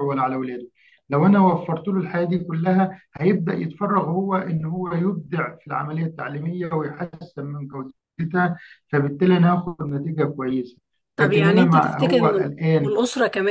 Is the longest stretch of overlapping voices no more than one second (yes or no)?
no